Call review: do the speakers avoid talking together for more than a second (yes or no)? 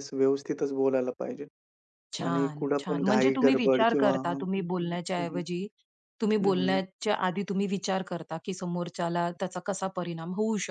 no